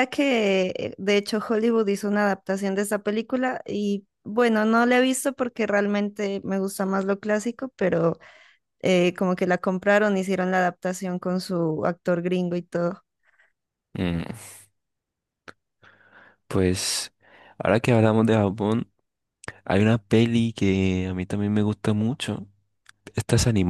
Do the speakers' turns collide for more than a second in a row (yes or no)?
no